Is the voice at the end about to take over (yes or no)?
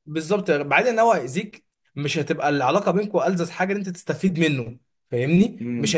yes